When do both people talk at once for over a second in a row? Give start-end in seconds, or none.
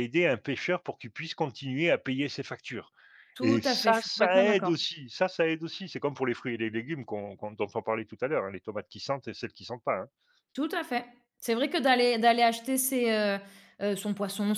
3.4-4.7